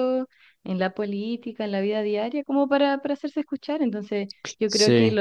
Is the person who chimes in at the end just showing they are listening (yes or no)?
yes